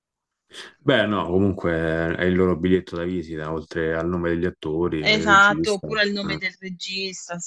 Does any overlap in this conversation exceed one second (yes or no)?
yes